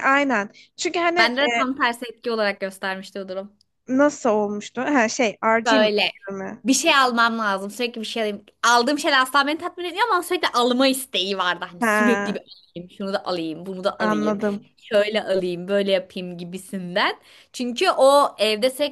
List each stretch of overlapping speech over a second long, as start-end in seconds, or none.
none